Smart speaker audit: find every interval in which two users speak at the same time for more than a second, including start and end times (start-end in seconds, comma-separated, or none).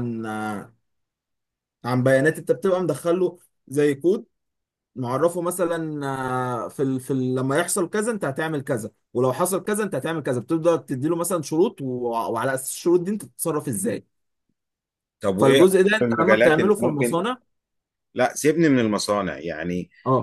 15.4-17.2